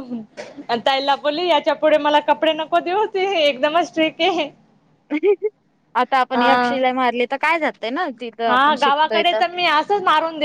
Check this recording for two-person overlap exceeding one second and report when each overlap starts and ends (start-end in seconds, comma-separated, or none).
none